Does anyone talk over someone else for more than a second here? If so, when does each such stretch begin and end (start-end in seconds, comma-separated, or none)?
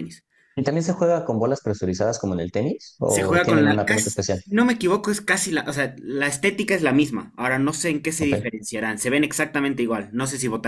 3.1-4.4